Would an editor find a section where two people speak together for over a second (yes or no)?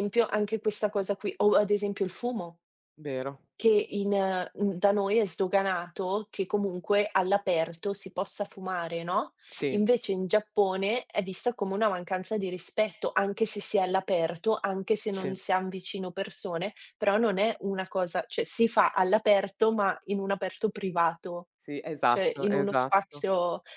yes